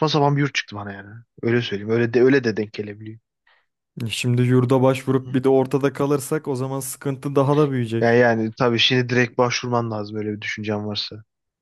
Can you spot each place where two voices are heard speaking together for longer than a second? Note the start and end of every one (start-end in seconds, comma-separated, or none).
none